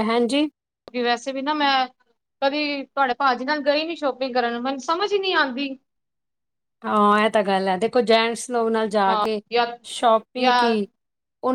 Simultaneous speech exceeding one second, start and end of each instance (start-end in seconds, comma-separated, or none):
none